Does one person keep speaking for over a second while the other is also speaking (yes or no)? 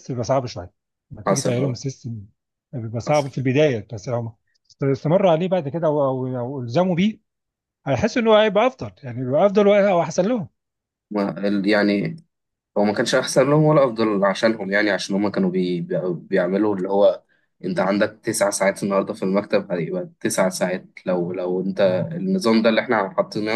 no